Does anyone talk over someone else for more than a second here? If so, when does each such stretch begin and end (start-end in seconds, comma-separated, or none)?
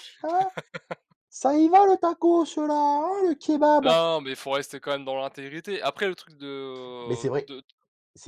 none